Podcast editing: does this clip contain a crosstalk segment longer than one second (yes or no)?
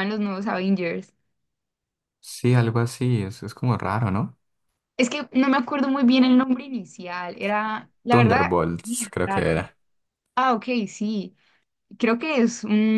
yes